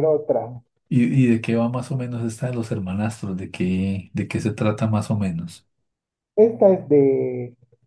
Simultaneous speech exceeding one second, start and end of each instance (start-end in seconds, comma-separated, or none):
none